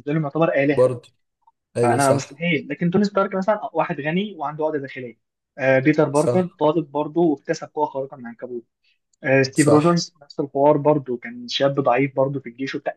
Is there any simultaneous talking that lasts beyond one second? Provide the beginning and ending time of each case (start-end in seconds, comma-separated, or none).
none